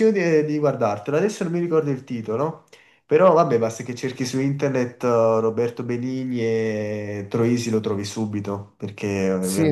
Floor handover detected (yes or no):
yes